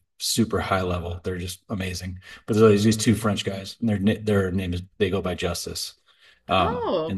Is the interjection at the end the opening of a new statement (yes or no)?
no